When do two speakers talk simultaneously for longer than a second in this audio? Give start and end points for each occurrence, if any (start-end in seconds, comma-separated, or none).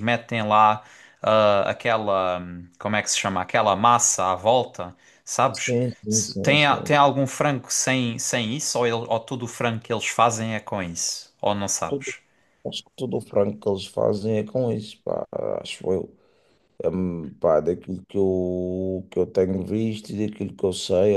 5.5-7.0